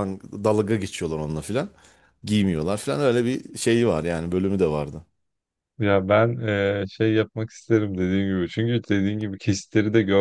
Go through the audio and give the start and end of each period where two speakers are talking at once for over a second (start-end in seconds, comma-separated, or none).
none